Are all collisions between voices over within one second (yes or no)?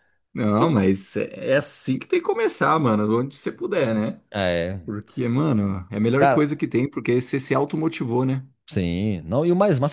yes